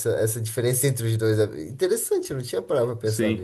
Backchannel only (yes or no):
no